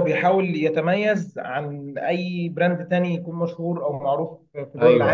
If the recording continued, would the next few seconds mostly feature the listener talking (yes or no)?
yes